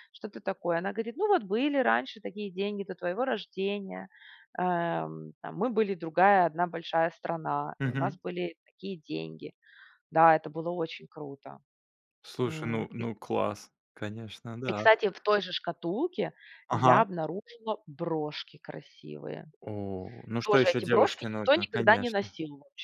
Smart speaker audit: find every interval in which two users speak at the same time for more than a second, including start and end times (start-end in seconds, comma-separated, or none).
20.4-22.3